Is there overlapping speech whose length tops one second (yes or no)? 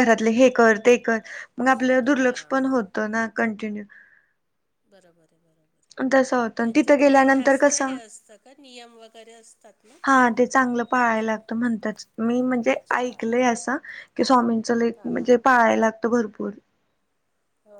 yes